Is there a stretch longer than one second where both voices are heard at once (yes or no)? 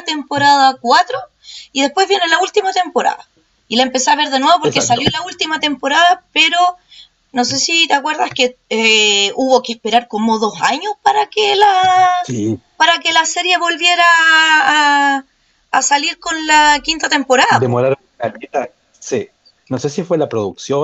no